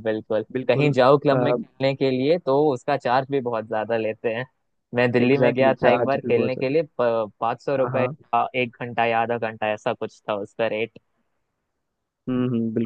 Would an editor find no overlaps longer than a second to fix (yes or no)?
no